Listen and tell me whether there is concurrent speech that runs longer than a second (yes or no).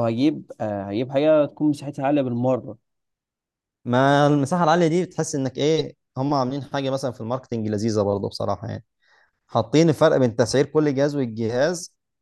no